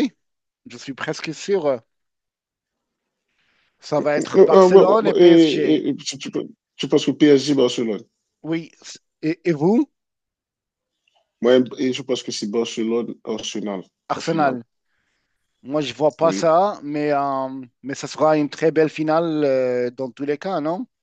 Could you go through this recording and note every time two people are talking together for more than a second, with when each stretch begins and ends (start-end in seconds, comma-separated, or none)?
4.2-5.8